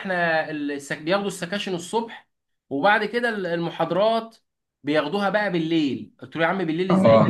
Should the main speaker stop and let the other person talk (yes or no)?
no